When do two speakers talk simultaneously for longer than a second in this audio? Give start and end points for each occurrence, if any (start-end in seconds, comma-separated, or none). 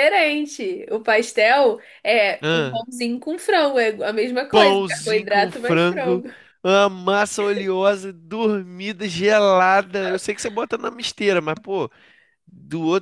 4.5-6.2